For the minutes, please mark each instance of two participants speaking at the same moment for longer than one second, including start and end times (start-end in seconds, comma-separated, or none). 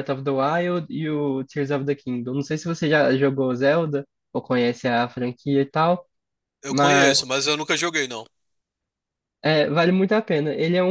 none